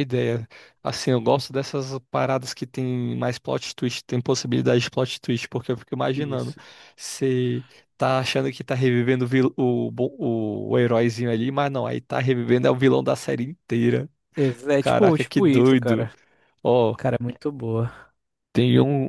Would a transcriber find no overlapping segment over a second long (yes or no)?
no